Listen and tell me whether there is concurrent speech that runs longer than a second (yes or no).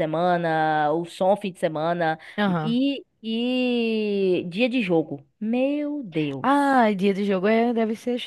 no